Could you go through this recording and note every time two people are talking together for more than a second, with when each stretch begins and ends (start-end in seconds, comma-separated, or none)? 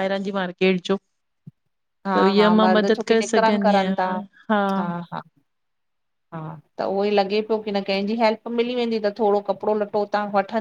2.1-4.0